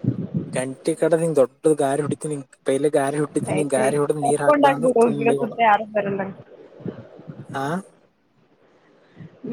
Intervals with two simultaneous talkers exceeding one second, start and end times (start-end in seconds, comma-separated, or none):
3.6-5.6